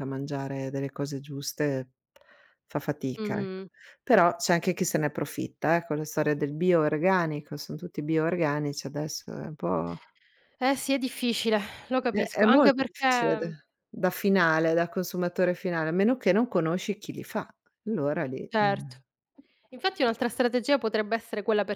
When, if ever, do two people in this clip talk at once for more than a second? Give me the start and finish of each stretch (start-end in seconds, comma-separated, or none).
12.1-13.5